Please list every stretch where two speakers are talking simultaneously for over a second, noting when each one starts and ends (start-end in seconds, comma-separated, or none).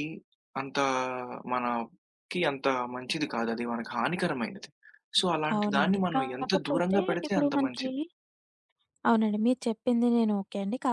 5.6-7.8